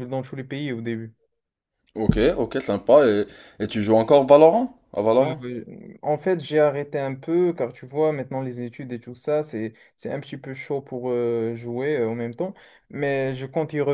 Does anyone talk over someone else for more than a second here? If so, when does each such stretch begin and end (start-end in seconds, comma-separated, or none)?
none